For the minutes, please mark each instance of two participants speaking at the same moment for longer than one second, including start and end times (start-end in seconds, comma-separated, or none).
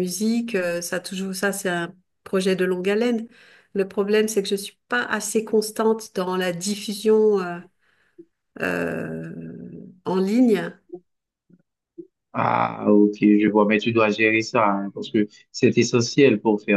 none